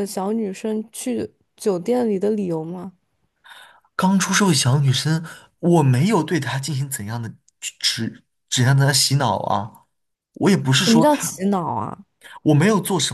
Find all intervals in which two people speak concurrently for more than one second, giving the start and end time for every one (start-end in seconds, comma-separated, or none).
none